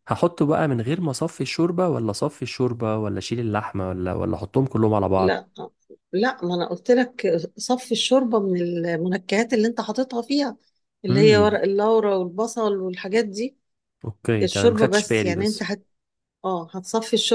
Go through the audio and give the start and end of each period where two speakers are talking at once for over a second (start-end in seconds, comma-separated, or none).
14.4-15.7